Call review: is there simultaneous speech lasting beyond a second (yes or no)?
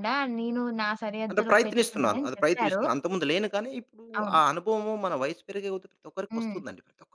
yes